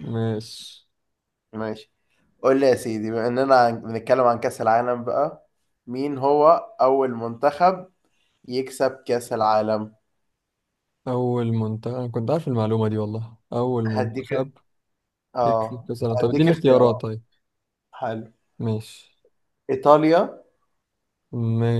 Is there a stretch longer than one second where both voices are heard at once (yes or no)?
yes